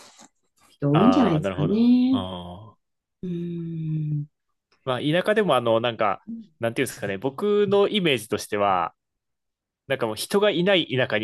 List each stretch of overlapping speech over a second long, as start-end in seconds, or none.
0.9-2.2